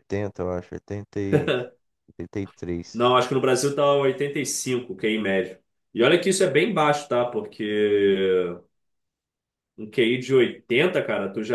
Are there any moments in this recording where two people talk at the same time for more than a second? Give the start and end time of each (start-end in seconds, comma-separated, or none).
none